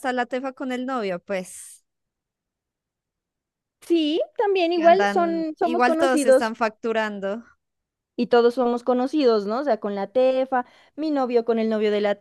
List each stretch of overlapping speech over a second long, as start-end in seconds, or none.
4.7-6.5